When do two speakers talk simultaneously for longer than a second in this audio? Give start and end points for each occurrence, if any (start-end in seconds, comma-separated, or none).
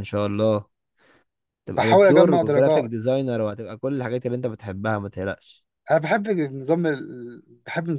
1.8-3.0